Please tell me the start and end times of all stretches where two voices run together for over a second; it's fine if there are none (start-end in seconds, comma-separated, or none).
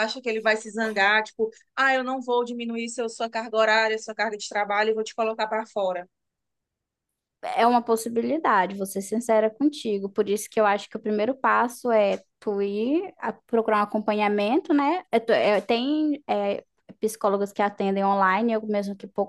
none